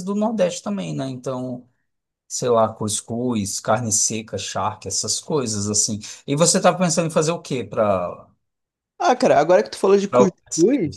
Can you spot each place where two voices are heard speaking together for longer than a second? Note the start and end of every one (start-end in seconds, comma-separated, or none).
none